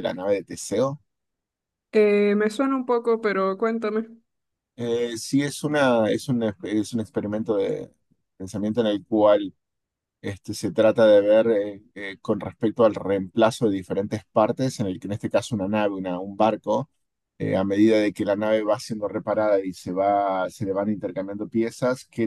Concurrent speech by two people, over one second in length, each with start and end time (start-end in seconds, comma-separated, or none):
none